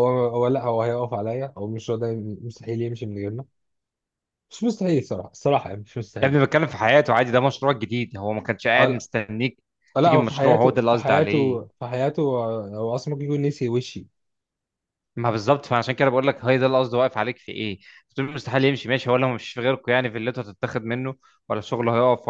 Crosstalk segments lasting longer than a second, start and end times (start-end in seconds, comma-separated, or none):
10.0-11.6